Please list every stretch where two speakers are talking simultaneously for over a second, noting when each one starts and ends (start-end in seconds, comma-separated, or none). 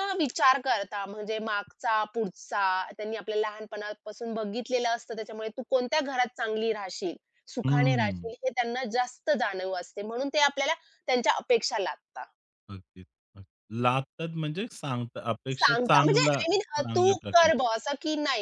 15.5-17.5